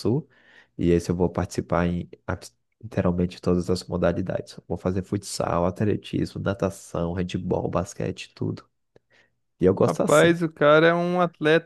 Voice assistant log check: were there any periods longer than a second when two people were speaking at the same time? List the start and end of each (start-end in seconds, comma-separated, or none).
none